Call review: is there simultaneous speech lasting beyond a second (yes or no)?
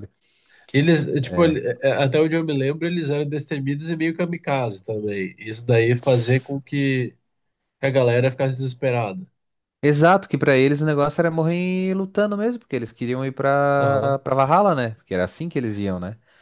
no